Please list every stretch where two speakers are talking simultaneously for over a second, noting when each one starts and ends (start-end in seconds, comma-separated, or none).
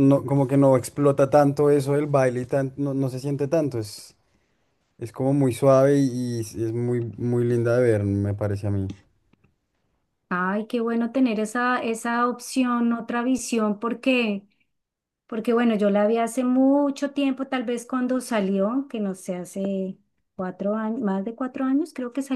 none